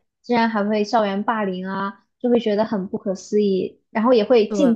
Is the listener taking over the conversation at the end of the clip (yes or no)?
no